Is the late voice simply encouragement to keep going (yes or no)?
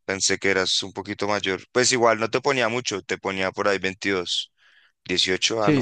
no